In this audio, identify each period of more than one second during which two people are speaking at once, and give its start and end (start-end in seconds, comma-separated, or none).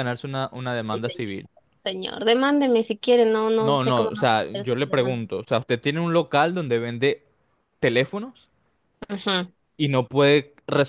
3.7-5.2